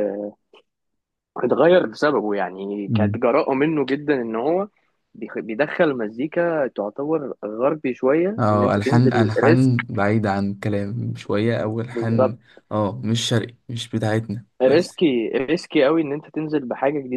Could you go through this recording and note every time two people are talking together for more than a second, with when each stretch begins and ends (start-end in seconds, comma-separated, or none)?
8.4-9.9